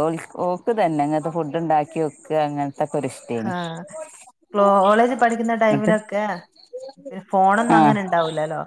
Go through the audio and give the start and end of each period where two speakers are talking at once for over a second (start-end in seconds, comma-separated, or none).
none